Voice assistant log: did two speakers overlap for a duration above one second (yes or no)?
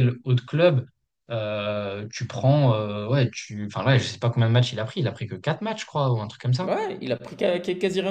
no